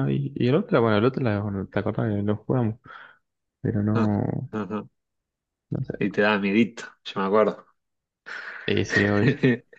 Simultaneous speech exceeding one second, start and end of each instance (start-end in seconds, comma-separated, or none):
none